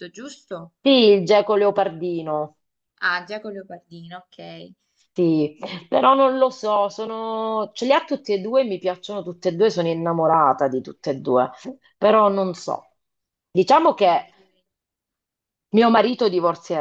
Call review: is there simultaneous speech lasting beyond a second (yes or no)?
no